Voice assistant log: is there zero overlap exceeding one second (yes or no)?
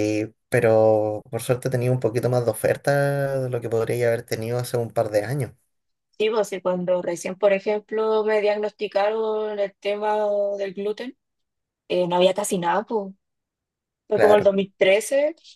yes